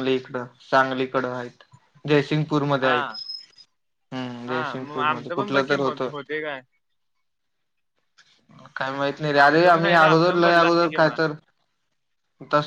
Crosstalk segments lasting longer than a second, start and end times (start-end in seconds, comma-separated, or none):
4.5-6.1, 9.4-11.1